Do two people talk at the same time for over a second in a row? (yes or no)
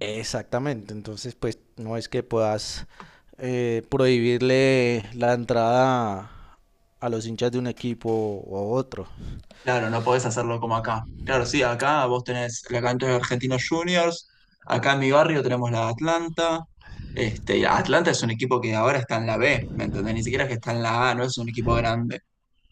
no